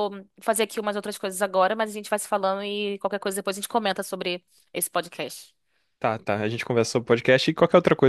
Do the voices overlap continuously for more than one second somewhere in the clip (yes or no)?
no